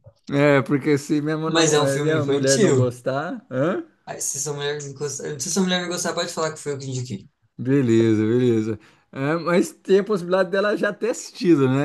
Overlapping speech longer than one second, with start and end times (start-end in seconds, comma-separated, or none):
1.4-3.0